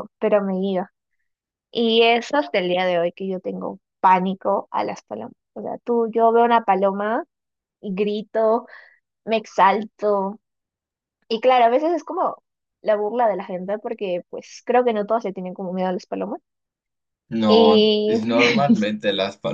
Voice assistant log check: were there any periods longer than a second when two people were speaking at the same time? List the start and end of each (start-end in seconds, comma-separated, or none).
17.5-18.9